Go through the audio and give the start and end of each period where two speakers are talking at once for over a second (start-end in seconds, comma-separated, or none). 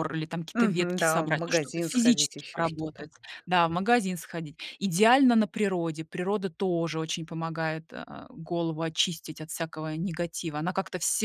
0.5-3.1